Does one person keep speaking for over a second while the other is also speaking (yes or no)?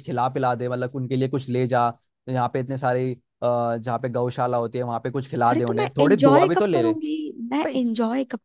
yes